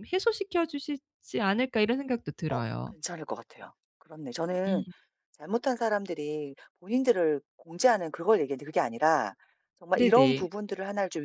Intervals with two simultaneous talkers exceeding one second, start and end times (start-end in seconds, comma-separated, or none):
none